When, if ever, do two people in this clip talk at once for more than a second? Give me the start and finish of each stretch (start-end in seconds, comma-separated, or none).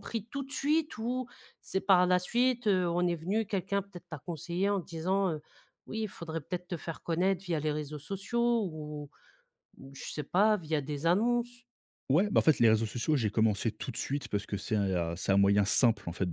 none